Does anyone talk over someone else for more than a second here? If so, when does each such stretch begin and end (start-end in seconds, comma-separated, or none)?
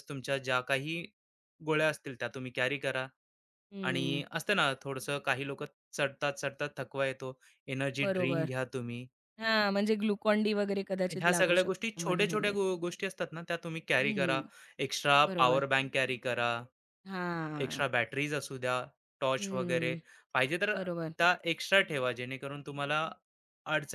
11.1-12.6